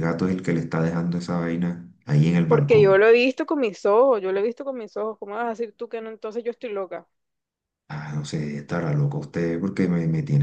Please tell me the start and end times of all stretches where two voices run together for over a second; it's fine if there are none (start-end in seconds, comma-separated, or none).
none